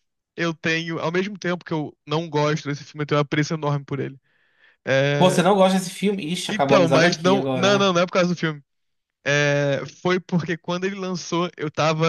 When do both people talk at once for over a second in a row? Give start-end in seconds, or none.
6.5-7.9